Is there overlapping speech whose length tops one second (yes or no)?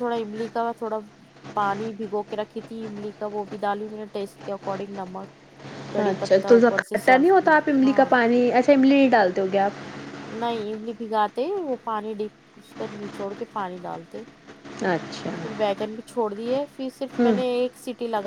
yes